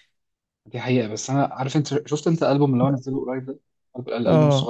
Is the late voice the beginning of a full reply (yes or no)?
yes